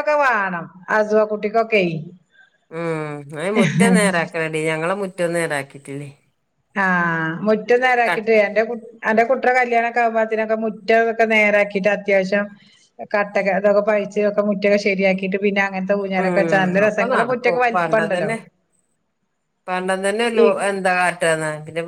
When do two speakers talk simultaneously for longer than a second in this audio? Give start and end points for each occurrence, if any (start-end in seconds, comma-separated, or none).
16.2-18.3